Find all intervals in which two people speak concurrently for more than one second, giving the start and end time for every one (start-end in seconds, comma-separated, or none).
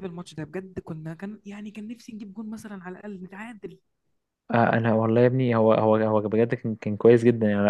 none